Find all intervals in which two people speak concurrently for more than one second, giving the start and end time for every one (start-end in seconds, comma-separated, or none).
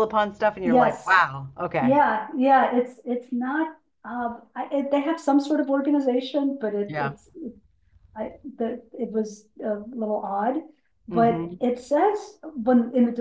none